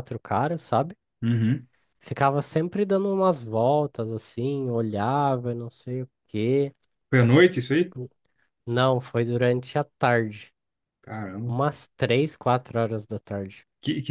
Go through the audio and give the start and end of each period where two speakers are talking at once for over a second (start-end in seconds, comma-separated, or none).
none